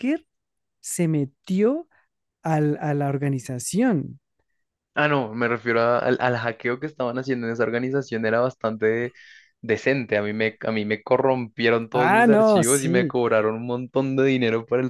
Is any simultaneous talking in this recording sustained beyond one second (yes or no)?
yes